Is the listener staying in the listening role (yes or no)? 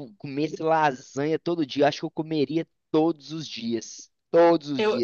yes